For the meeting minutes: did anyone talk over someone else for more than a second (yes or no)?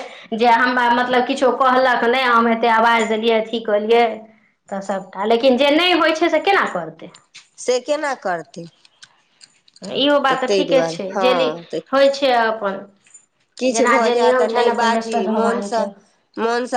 yes